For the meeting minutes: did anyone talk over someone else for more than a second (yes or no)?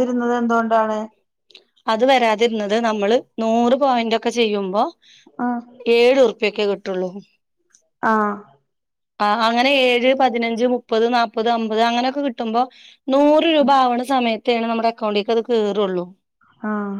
no